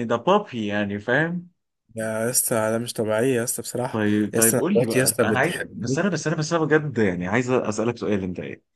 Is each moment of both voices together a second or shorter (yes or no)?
no